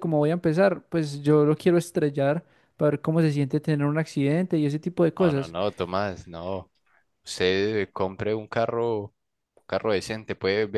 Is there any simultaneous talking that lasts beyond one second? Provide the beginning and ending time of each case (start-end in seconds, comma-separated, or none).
none